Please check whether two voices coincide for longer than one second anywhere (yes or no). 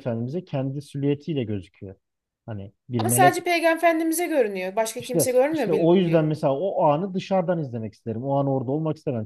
yes